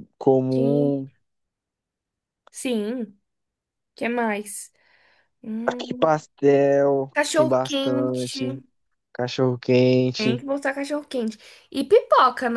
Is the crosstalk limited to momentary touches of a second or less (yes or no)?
no